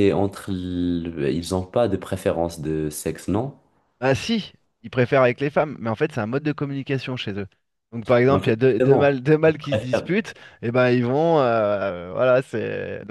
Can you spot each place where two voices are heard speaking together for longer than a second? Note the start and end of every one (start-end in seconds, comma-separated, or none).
8.3-10.1